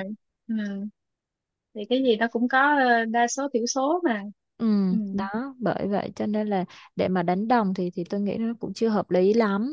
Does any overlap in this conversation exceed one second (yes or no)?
no